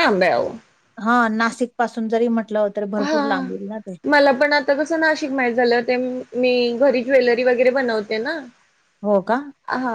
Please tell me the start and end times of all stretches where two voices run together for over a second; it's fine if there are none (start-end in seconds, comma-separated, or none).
none